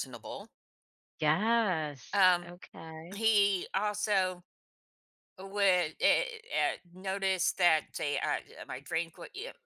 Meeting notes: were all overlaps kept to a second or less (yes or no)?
yes